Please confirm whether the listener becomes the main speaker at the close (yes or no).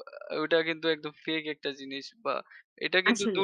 no